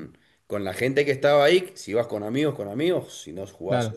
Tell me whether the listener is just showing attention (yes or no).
no